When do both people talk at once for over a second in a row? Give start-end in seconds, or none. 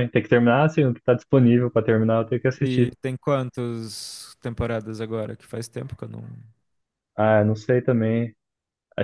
none